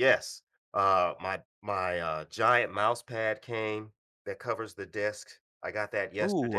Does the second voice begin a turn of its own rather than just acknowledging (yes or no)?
yes